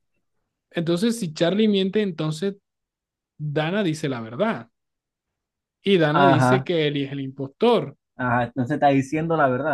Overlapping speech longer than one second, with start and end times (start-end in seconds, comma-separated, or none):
none